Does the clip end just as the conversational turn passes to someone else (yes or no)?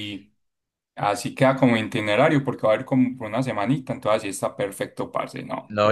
yes